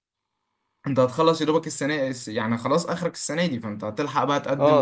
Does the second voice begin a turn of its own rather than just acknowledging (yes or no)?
no